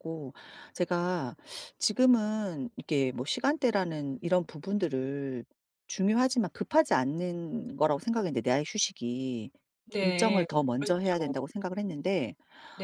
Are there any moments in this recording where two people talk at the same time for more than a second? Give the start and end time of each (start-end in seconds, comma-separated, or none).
10.0-11.3